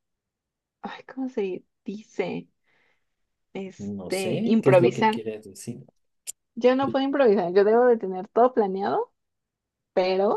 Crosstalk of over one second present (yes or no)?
yes